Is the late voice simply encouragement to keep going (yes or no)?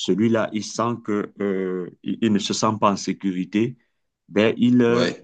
yes